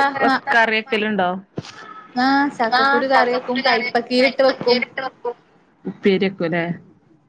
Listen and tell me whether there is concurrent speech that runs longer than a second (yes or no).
yes